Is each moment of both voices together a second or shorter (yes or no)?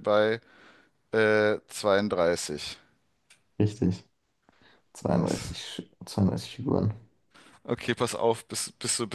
yes